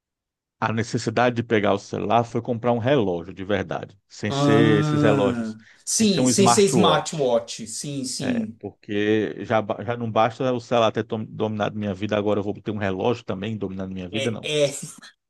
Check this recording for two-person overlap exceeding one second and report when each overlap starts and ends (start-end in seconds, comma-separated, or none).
4.3-7.4